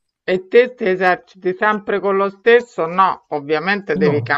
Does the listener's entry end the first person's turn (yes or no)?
no